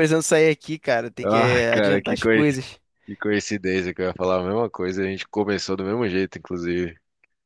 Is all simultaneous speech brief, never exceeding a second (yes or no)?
no